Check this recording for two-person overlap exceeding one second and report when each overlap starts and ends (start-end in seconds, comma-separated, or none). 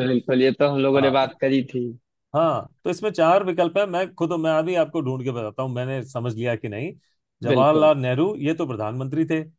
none